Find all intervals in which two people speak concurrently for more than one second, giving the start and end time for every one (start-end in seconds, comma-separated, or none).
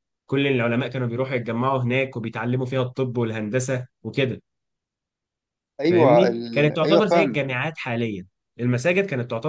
5.8-7.4